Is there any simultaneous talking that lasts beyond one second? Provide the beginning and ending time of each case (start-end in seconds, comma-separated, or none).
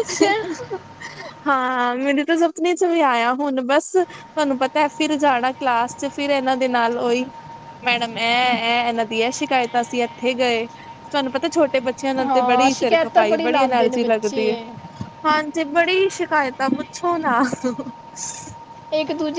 12.2-14.6